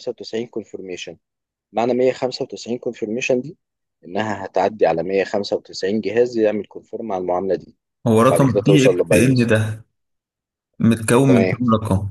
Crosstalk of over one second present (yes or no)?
yes